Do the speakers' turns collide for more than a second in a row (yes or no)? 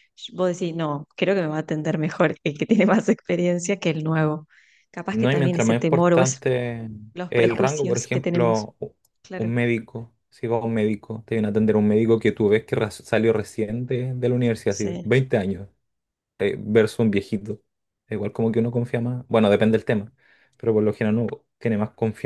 yes